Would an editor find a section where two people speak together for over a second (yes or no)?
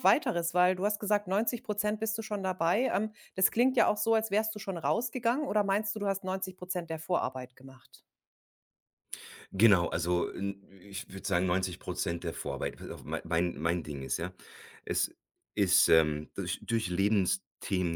no